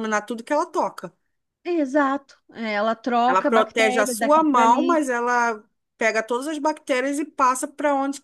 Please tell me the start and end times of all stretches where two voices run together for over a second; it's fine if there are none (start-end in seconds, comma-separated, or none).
3.3-5.1